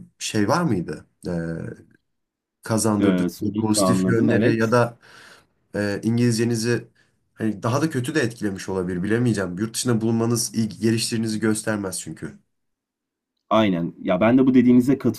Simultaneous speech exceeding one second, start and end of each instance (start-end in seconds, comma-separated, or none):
3.0-4.8